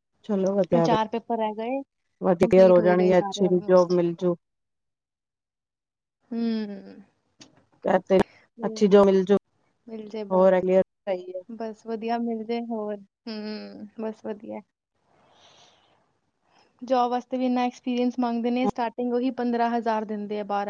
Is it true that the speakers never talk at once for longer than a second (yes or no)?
no